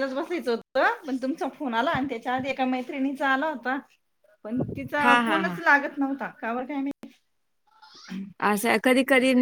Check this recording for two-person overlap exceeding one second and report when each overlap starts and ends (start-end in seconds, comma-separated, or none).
none